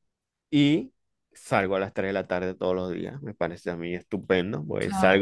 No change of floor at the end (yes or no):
yes